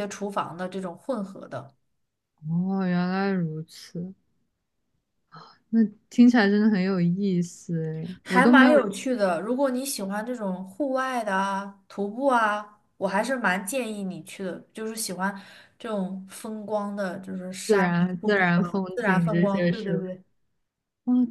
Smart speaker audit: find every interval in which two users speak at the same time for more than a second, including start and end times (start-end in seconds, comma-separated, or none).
17.6-20.1